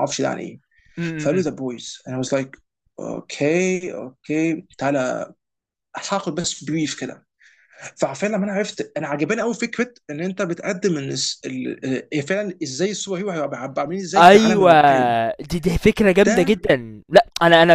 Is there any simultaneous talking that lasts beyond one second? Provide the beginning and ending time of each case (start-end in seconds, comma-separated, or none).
none